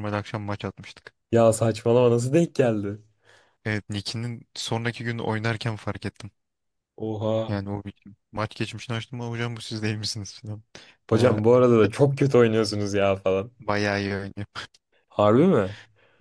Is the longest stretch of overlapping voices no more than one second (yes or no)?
yes